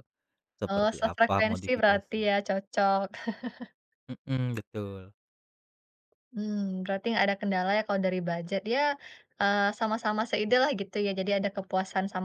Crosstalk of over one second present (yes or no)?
yes